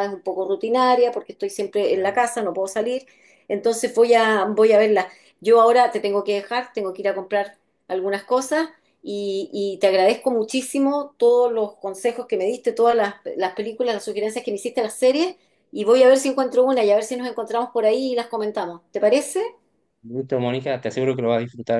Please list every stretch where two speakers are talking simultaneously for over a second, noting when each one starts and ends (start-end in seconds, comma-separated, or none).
none